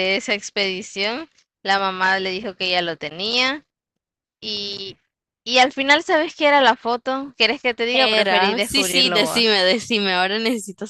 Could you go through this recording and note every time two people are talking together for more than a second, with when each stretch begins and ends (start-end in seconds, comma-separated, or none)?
7.9-9.5